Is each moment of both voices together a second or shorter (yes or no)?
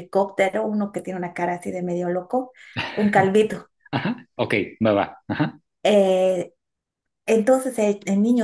yes